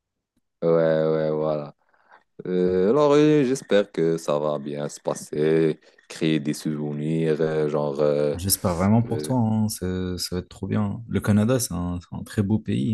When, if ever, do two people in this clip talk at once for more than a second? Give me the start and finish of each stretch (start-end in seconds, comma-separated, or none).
none